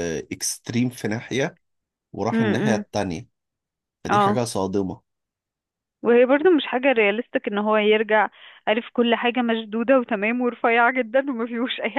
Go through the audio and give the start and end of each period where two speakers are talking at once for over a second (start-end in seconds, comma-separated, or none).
none